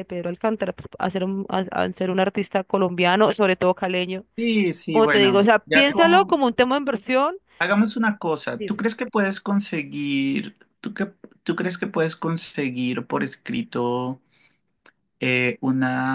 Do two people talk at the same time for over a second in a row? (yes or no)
yes